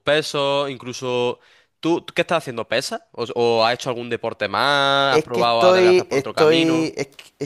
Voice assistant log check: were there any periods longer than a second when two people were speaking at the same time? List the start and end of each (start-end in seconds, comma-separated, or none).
5.1-6.9